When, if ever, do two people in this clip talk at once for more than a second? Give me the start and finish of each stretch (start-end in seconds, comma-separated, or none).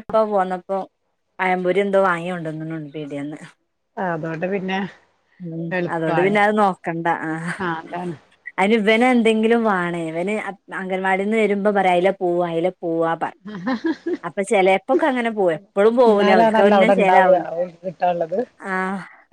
16.1-17.4